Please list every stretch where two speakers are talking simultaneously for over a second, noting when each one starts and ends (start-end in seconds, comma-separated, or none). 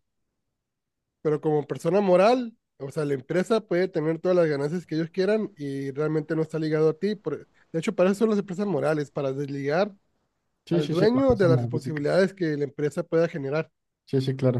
10.7-12.1